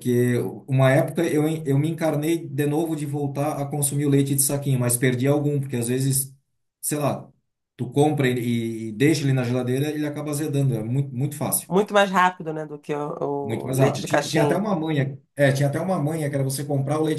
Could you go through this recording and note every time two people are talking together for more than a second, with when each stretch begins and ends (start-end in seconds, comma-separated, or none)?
13.4-14.6